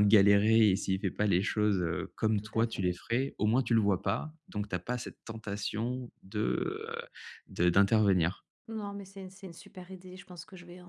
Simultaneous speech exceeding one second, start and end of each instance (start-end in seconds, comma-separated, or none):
none